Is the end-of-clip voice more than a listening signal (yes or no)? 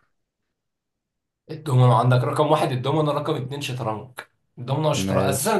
no